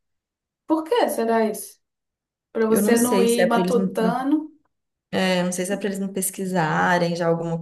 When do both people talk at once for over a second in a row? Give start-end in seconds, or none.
2.7-4.2